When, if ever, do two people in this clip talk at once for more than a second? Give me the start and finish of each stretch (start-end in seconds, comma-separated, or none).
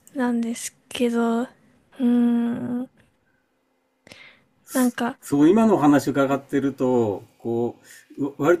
none